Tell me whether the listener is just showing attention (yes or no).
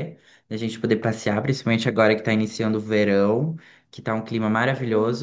yes